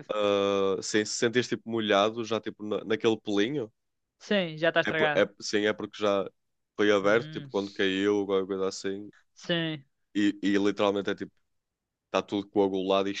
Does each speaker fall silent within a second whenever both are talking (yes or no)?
yes